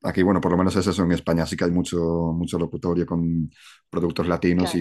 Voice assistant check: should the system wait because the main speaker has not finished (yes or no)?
yes